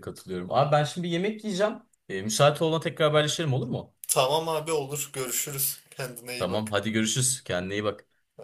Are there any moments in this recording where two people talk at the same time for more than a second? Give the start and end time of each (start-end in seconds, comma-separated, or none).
none